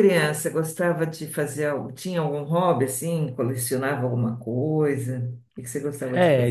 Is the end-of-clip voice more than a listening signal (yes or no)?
yes